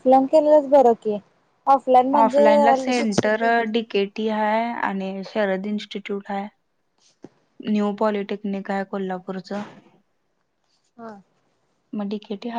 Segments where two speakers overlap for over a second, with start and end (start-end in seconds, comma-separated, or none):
2.2-3.4